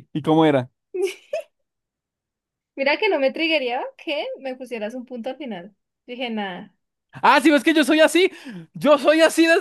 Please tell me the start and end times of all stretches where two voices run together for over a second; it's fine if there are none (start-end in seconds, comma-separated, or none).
none